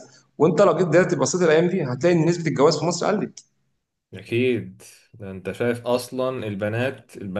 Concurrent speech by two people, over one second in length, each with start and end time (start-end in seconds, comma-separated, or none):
none